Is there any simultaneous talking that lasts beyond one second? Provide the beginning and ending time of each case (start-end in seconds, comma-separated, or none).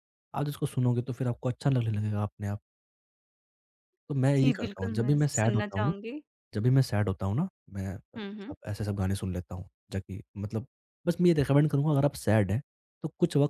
4.4-5.9